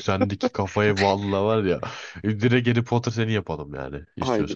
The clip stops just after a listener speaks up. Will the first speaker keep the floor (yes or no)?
no